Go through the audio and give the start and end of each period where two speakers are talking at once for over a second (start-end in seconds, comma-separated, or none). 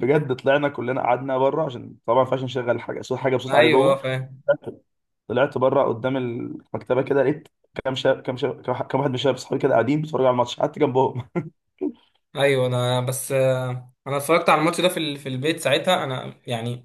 none